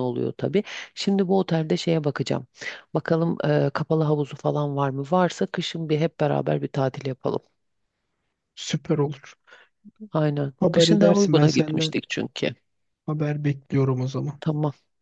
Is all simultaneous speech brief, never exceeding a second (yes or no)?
no